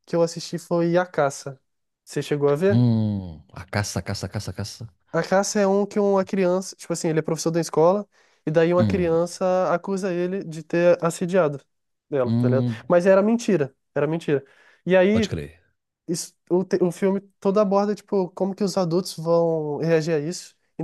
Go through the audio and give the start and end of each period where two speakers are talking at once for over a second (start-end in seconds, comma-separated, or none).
none